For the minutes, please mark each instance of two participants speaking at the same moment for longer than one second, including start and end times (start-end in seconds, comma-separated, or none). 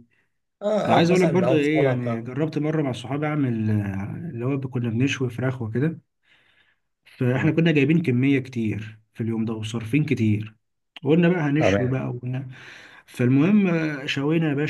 0.8-2.3